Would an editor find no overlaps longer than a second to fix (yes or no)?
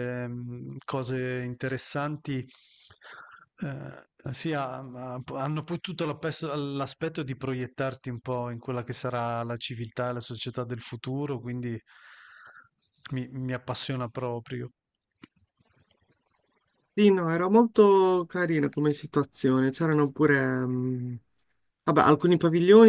yes